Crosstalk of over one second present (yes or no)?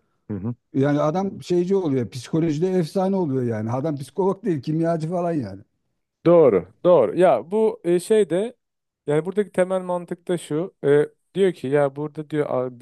no